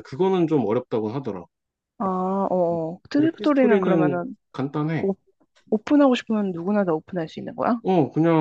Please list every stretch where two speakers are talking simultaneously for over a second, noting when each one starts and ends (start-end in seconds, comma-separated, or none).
3.1-4.4